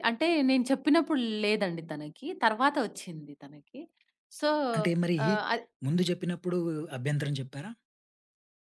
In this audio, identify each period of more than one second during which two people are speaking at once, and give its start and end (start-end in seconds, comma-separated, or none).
none